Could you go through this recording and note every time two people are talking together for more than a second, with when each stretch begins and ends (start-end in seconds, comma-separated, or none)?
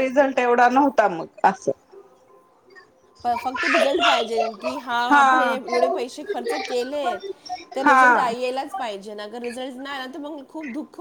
none